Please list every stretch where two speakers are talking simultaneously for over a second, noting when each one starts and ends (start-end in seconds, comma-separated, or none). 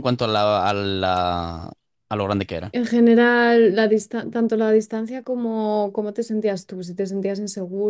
none